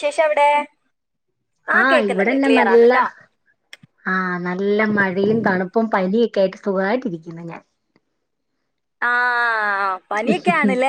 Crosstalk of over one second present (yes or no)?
no